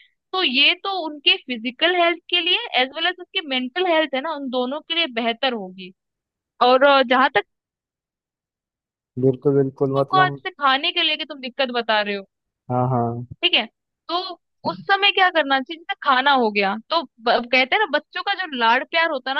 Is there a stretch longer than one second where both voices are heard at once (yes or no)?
no